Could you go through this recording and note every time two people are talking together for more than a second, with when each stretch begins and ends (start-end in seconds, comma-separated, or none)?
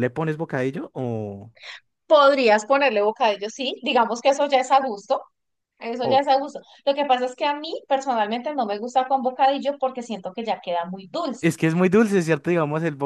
none